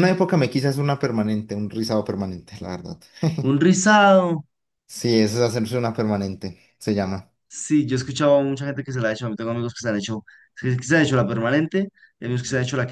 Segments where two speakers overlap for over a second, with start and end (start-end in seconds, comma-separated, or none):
none